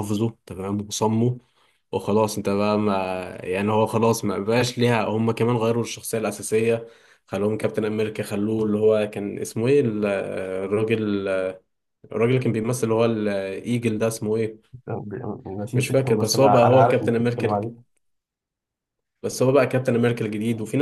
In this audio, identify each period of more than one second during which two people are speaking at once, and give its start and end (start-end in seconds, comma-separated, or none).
15.8-17.7